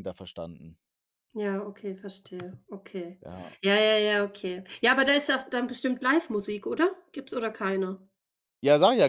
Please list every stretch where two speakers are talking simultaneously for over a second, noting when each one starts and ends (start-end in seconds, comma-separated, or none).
none